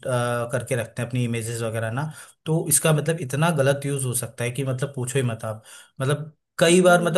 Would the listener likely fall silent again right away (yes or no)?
yes